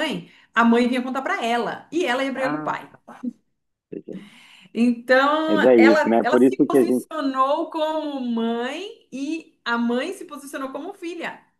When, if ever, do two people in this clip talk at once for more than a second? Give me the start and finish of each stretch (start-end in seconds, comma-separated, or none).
5.5-7.1